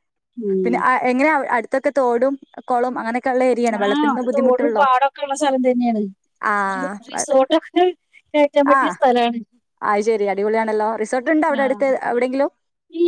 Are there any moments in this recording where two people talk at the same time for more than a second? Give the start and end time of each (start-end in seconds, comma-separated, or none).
none